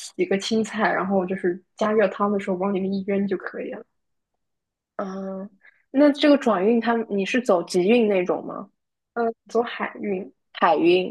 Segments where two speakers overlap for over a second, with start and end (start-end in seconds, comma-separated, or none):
none